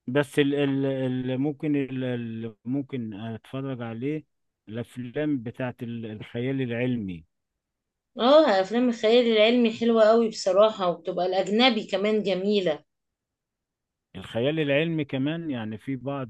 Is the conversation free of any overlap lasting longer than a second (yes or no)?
yes